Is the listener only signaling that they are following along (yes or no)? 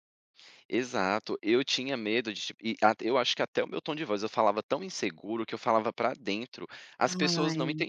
yes